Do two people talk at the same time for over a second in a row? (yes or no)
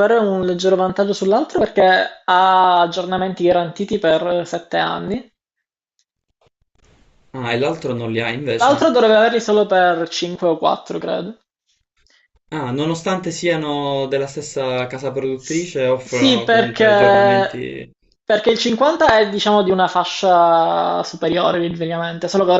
yes